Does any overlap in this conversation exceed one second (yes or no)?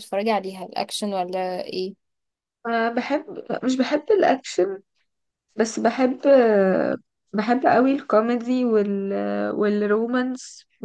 no